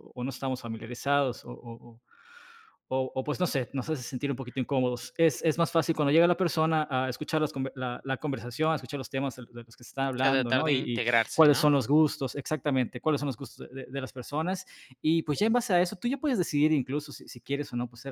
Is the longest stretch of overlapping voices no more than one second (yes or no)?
no